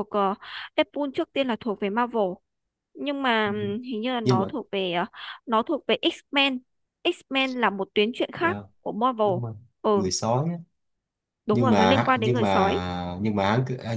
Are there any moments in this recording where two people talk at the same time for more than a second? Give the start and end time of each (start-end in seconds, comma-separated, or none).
11.5-12.8